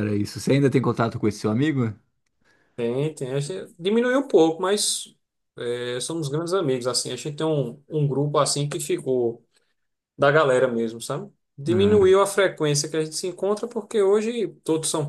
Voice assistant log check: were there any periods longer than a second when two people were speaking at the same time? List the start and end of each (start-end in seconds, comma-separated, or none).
none